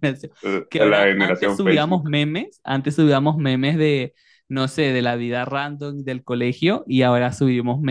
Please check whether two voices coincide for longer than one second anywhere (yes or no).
yes